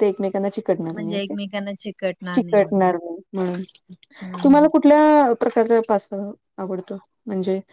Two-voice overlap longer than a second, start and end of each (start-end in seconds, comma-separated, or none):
none